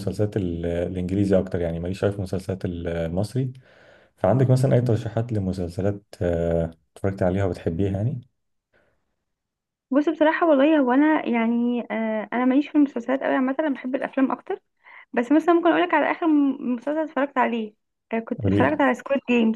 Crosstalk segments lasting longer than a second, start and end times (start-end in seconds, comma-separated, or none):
none